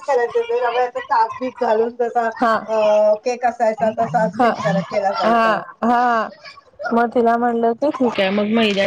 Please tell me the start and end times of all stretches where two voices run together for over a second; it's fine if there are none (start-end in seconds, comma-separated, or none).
none